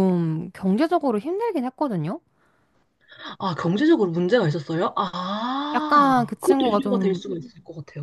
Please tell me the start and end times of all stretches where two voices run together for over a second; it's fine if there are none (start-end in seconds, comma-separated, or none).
5.7-7.2